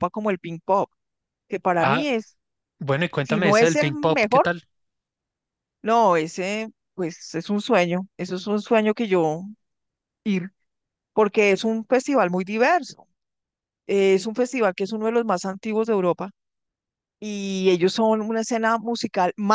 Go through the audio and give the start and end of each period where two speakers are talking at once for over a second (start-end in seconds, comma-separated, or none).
3.2-4.5